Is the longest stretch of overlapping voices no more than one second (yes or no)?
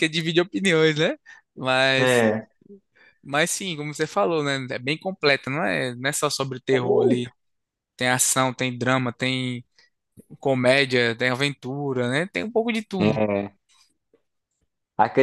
yes